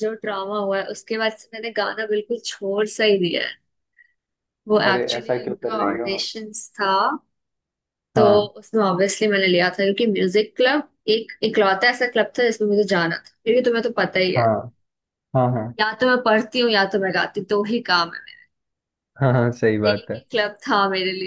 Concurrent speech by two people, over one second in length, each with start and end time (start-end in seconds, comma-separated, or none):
4.8-6.2